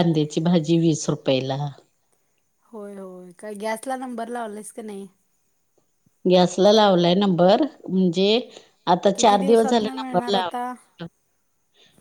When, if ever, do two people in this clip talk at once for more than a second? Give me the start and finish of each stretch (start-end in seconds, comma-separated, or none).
9.1-10.7